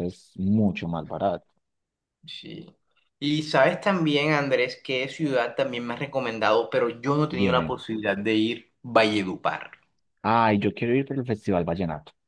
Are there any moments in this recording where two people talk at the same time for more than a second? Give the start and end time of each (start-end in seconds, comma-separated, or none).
none